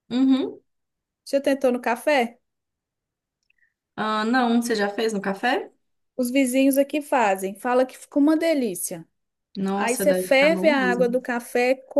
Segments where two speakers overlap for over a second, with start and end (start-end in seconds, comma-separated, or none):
9.7-11.2